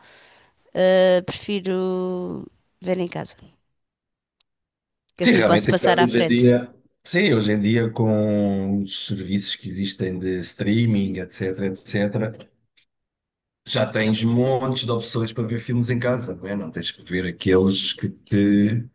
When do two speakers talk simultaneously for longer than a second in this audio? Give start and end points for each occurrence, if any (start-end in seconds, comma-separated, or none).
5.2-6.5